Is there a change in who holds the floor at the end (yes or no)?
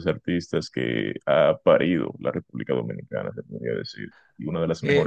yes